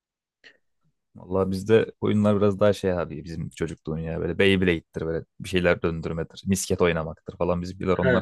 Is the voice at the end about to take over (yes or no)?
yes